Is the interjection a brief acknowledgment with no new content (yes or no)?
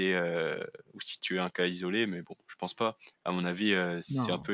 yes